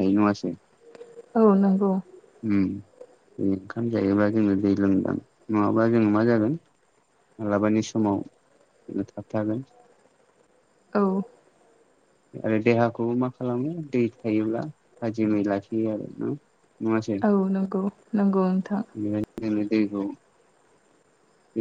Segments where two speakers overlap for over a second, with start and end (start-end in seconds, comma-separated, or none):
none